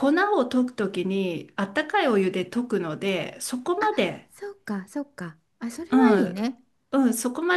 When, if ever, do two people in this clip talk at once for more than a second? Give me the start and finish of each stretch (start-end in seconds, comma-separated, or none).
none